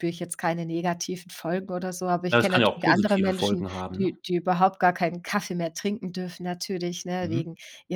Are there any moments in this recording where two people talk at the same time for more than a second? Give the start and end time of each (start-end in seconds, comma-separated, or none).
2.3-4.1